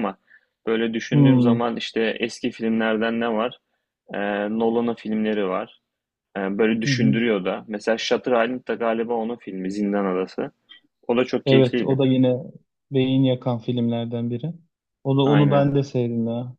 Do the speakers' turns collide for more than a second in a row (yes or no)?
no